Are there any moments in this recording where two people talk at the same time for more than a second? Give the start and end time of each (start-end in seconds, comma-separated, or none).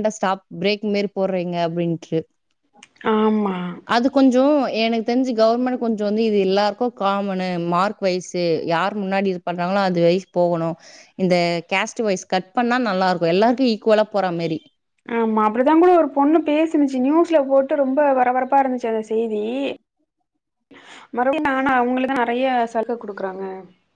none